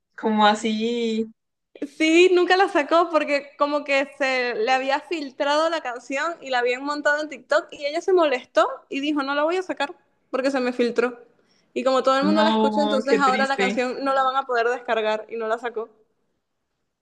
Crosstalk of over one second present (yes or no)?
yes